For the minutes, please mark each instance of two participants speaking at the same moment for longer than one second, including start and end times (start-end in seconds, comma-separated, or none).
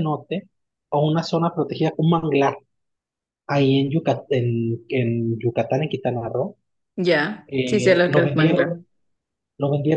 7.5-8.8